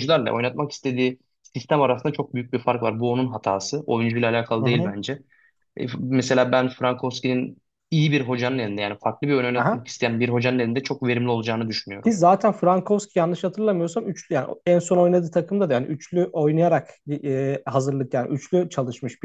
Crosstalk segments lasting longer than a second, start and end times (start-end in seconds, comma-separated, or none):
none